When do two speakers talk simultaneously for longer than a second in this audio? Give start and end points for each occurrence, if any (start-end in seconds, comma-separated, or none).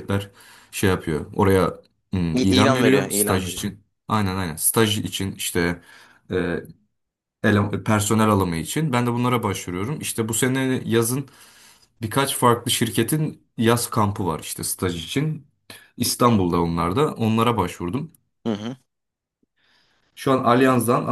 2.3-3.6